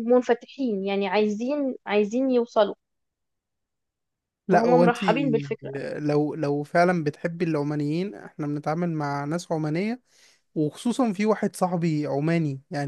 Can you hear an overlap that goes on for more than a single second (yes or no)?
no